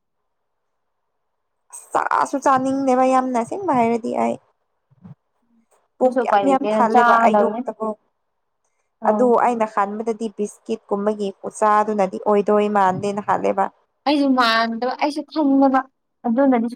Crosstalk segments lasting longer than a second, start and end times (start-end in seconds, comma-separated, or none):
6.0-7.6